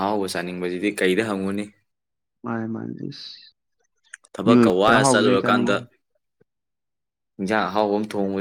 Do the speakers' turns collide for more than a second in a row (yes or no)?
yes